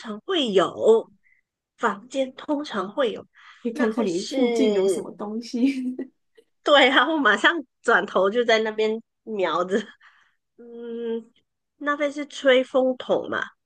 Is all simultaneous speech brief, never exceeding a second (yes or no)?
no